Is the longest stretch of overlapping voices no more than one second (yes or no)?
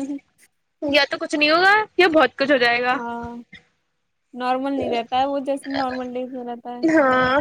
yes